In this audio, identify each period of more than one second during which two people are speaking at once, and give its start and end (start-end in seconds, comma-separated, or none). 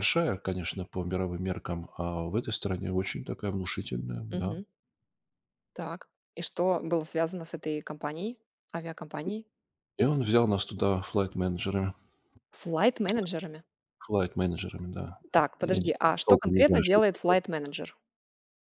15.6-17.4